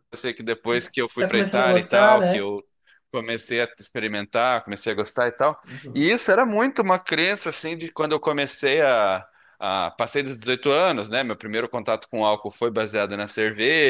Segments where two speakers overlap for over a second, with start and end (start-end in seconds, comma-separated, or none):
0.6-2.5